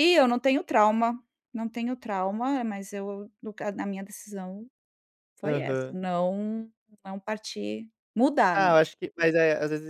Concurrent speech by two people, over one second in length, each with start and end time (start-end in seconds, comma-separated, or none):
none